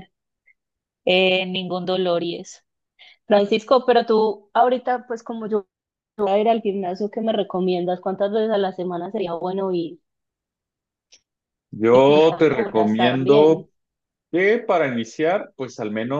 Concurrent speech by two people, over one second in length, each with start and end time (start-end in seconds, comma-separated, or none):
12.1-13.7